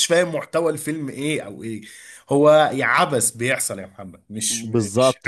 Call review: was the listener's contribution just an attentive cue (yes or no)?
no